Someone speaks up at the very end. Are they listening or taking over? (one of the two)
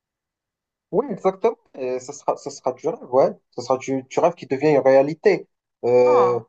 listening